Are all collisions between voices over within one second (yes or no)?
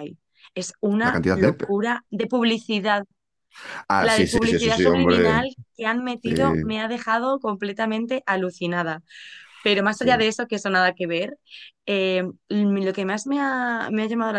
no